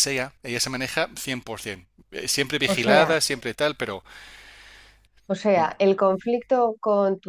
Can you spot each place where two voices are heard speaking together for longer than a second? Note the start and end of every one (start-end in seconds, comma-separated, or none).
none